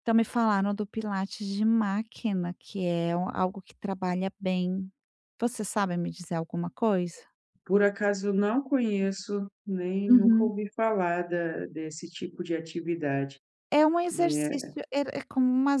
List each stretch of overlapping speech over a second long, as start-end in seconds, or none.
none